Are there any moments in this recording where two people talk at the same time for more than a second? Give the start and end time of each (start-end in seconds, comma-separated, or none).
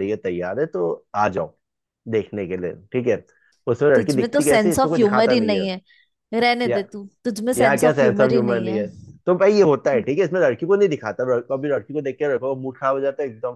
4.0-5.7, 7.6-8.8